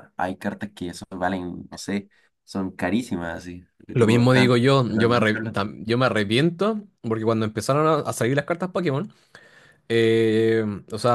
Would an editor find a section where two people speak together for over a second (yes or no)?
yes